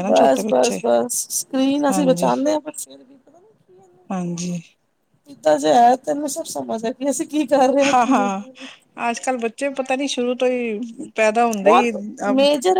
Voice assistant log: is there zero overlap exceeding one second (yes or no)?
yes